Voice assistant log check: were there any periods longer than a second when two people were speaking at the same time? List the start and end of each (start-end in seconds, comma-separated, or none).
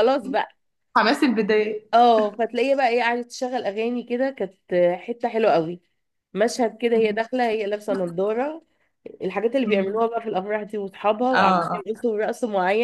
none